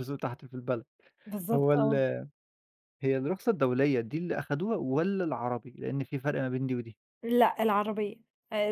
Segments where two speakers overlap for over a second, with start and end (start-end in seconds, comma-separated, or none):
none